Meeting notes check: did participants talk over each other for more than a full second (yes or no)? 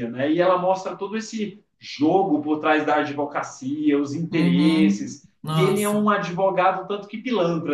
yes